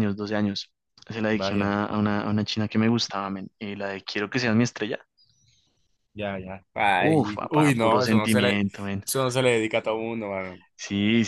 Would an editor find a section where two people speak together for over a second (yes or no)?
yes